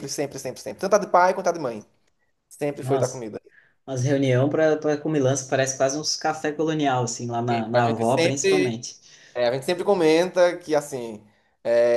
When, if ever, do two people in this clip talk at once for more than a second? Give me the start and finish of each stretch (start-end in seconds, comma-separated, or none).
7.5-8.8